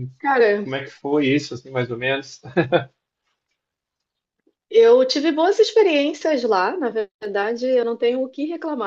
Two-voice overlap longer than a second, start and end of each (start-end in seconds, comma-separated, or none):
none